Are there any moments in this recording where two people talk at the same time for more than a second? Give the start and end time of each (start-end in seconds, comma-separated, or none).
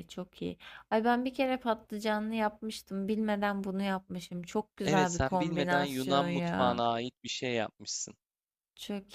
4.8-6.8